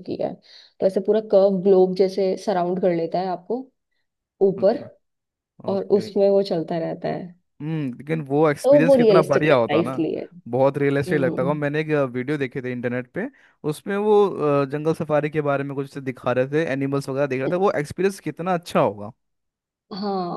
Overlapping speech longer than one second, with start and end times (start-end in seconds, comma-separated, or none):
8.6-10.1